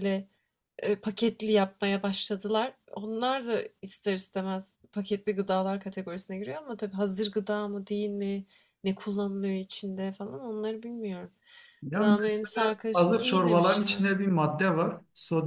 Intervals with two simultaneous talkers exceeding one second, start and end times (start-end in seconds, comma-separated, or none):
11.9-14.1